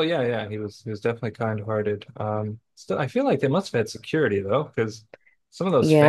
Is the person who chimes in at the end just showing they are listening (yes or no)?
no